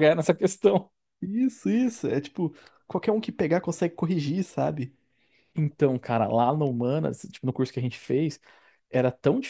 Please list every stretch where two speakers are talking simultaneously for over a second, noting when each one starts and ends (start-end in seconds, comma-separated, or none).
none